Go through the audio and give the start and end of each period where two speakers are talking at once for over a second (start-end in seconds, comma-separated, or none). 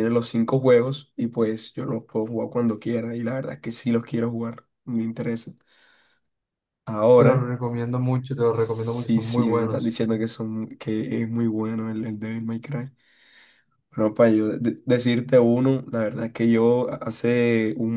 8.5-10.0